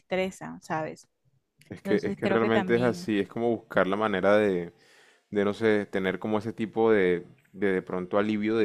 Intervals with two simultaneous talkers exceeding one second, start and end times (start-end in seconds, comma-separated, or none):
1.8-3.1